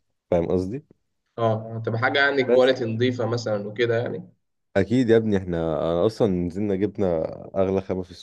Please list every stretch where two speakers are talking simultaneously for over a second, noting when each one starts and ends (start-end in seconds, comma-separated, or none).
none